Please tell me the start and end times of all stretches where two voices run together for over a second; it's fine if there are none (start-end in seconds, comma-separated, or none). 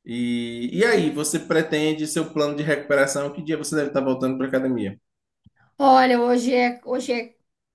none